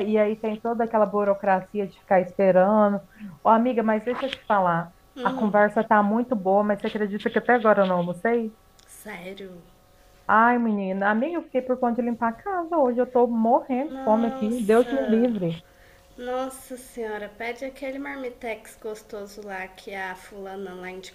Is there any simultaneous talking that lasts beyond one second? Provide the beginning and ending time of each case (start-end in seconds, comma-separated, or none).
13.9-15.3